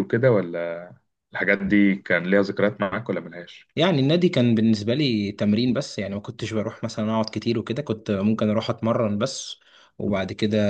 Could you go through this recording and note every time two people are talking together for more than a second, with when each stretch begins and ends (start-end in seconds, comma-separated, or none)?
none